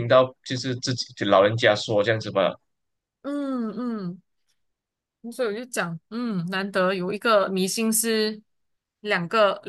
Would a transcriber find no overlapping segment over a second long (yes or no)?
yes